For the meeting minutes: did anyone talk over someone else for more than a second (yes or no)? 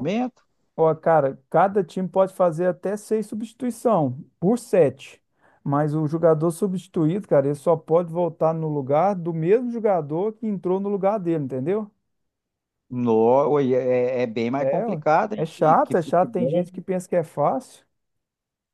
yes